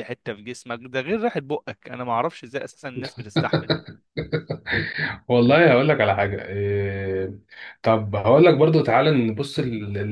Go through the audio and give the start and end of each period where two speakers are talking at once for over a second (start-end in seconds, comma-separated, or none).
none